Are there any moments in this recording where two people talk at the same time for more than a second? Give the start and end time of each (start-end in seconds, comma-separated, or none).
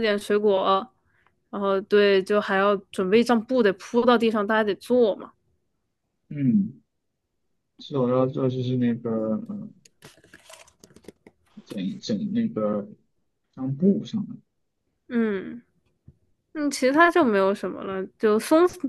none